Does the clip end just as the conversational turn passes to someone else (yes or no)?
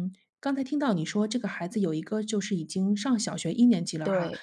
no